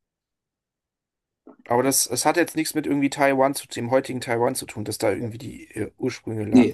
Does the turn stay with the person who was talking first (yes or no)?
no